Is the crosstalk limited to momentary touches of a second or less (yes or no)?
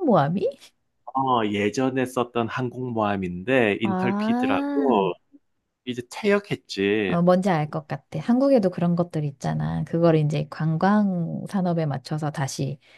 no